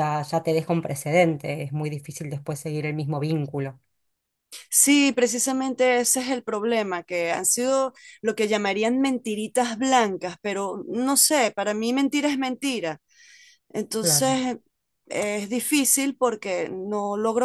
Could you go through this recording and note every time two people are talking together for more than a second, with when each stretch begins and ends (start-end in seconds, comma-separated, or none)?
none